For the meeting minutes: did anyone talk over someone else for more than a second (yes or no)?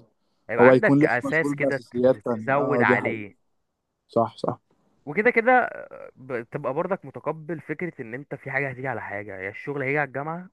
yes